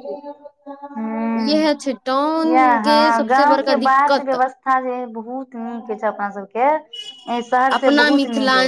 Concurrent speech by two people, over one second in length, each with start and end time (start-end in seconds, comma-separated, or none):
2.5-4.4